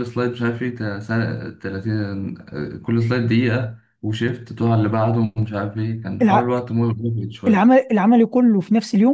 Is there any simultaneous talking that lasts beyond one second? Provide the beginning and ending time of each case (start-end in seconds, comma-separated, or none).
none